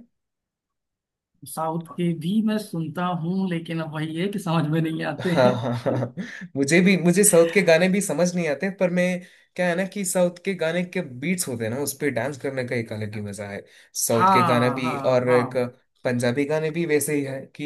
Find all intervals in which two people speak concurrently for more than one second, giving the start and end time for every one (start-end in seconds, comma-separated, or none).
14.2-15.6